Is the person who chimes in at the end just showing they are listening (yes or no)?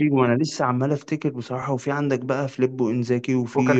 yes